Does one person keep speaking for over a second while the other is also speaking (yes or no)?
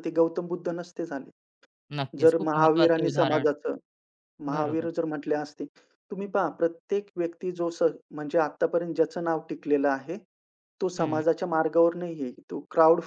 yes